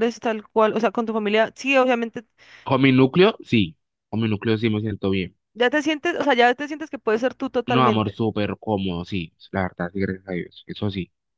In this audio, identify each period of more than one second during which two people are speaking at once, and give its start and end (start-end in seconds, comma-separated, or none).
none